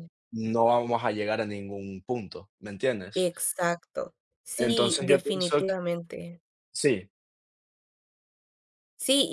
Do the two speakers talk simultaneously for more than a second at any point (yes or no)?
yes